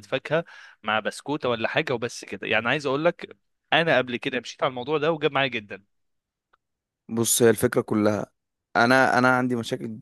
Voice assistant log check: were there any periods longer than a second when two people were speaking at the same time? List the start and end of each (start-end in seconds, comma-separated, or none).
none